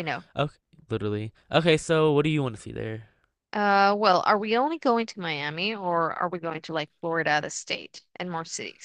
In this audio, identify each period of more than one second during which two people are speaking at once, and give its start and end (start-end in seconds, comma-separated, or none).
none